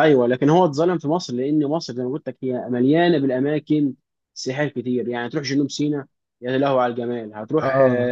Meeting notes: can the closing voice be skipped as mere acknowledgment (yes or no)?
yes